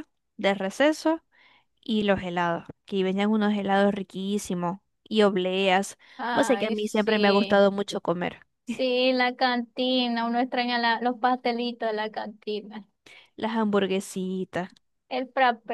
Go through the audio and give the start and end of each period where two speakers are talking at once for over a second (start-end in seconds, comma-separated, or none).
6.3-7.7